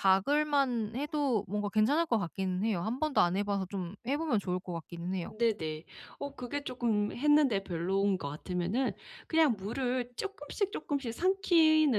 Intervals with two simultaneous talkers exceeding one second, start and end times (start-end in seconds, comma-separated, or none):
none